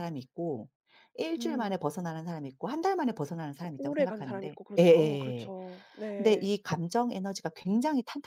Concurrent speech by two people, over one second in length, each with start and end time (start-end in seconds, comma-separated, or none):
3.8-5.5